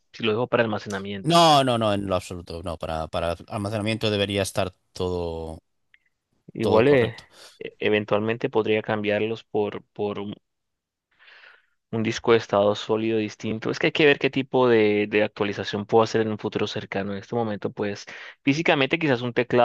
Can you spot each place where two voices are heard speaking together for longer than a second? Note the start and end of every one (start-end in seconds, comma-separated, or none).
none